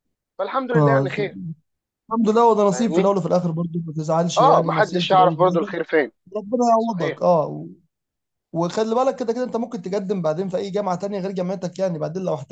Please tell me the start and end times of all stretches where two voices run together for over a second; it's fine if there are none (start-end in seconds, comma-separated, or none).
4.4-5.7